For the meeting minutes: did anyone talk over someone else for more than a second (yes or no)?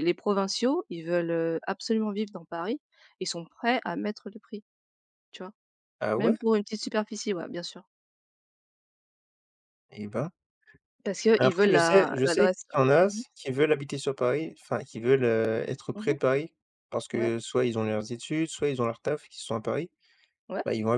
yes